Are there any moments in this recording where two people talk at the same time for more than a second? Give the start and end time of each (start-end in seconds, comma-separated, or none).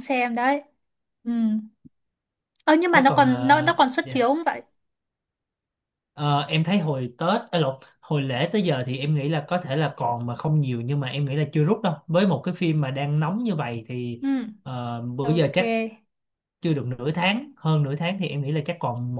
2.9-4.3